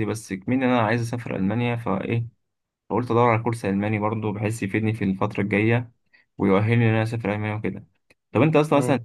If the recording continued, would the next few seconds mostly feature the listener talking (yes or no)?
no